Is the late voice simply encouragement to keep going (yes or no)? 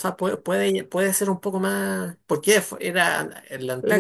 no